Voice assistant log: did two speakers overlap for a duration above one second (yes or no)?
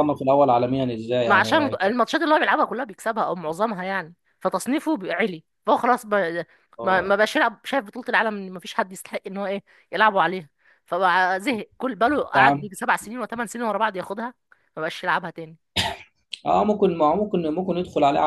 no